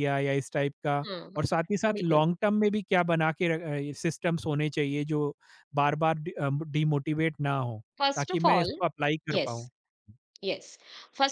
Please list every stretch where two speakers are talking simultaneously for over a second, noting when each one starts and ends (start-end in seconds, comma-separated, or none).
none